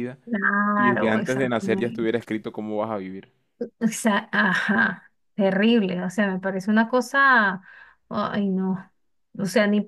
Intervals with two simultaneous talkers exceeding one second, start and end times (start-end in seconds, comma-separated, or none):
0.8-2.1